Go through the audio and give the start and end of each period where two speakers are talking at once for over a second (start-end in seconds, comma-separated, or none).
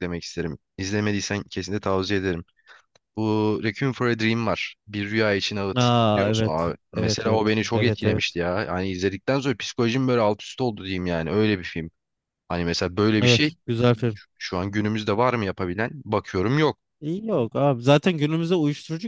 5.8-8.4